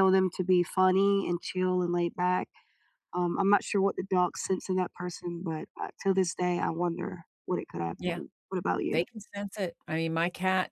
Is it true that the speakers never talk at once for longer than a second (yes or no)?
yes